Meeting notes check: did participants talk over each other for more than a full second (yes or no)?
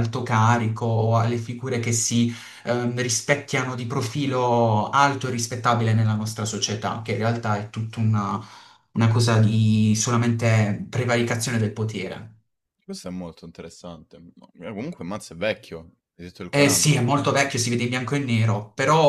no